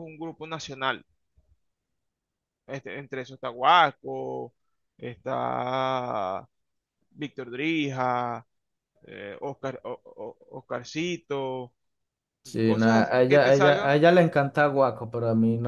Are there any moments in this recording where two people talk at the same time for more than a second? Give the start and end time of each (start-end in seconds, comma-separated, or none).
12.6-14.0